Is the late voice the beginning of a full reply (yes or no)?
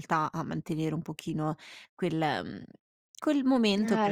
no